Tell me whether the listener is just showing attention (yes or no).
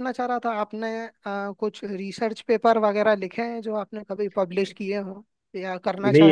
no